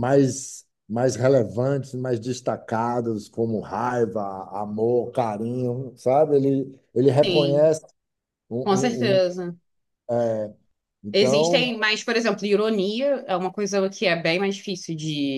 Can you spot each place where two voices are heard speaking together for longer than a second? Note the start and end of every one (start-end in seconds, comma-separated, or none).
none